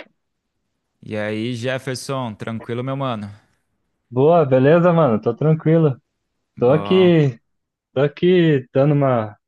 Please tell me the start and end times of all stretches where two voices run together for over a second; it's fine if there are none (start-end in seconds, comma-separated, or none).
none